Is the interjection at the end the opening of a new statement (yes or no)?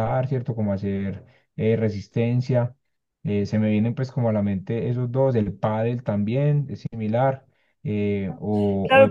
yes